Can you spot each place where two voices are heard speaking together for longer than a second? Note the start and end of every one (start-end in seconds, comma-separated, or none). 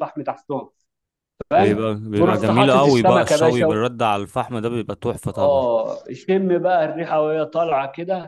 1.6-3.8